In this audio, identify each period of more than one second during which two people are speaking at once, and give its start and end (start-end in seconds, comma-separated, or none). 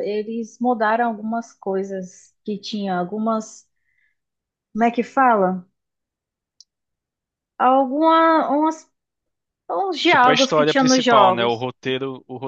10.1-11.7